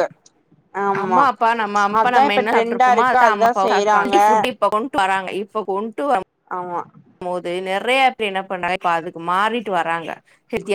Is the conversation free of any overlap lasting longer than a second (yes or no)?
no